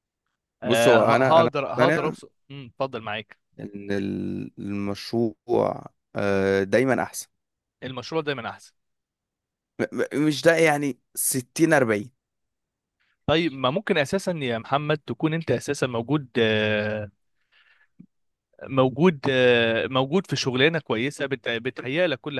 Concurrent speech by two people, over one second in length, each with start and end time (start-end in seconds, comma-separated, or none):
0.6-2.1